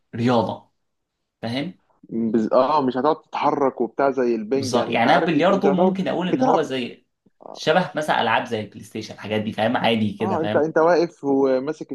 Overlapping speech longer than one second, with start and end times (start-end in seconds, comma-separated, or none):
4.5-6.7